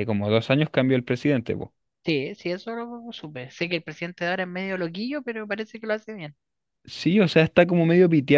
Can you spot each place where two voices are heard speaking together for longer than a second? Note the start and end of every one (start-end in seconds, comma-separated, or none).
none